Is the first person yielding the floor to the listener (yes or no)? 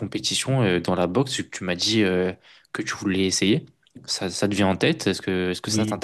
yes